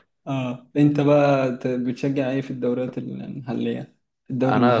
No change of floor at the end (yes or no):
no